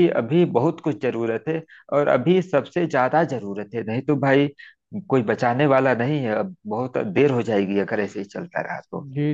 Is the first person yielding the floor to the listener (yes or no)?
yes